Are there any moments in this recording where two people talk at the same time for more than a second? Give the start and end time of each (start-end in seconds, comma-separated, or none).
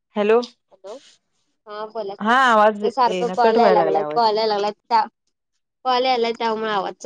2.2-4.2